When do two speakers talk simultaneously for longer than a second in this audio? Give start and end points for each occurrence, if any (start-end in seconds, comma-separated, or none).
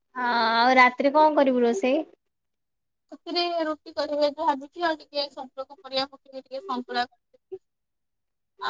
none